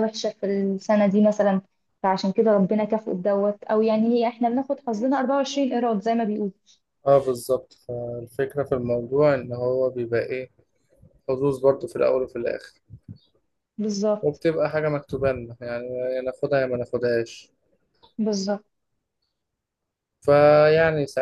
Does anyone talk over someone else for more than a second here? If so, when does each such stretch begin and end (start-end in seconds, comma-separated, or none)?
none